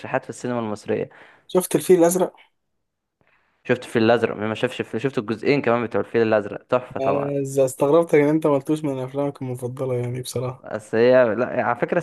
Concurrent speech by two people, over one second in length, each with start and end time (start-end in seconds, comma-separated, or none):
none